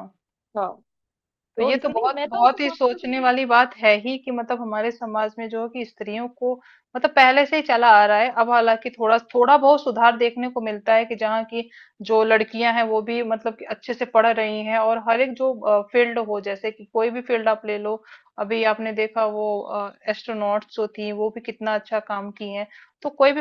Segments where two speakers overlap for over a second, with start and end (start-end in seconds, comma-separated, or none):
1.6-3.3